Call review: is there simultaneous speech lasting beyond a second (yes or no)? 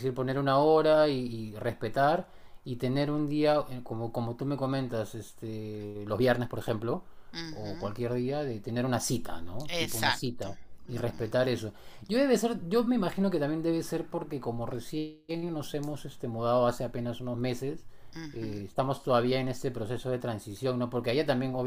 yes